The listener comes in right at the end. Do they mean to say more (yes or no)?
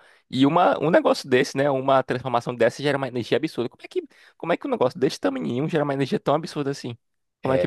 yes